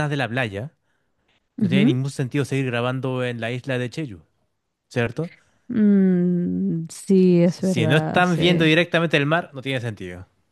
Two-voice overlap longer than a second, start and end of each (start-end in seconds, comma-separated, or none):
7.4-8.7